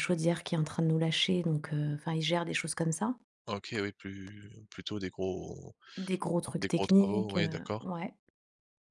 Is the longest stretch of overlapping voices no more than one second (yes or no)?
no